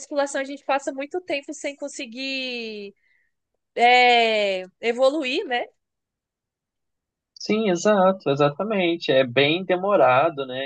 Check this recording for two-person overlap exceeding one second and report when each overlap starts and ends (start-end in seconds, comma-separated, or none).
none